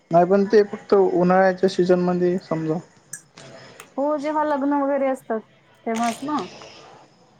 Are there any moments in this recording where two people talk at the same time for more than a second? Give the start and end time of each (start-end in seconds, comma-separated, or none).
none